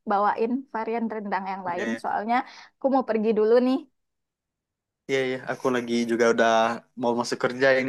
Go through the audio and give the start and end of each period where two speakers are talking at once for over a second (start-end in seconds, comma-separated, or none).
none